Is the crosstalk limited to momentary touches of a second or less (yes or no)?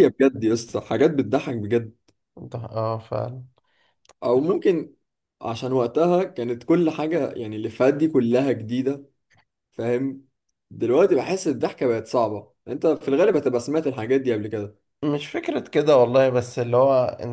yes